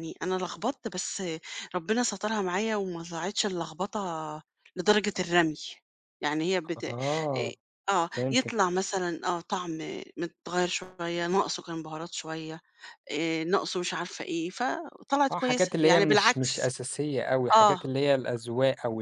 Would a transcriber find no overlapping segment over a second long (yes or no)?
no